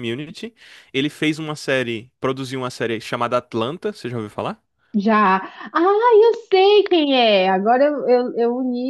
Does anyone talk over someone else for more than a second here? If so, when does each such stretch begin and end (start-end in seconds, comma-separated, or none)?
none